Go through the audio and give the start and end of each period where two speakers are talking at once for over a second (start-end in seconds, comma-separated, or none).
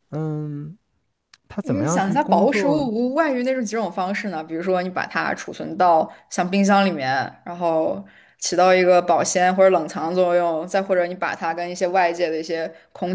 1.6-2.9